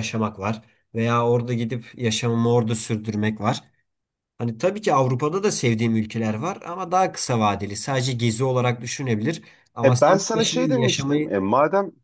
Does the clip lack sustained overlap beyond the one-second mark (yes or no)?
no